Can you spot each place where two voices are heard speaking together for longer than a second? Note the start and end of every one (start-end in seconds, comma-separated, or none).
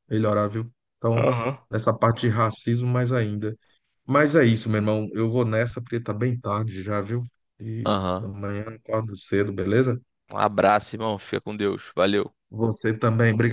none